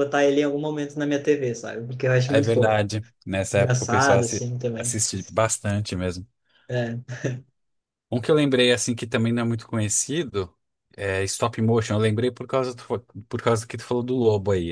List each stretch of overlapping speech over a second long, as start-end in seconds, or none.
3.5-5.0